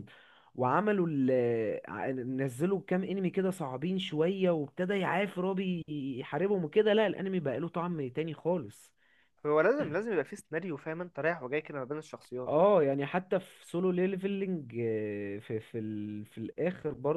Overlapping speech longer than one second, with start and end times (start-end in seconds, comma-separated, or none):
none